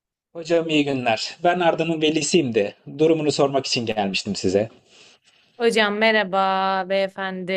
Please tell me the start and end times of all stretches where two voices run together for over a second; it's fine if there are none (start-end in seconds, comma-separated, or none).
none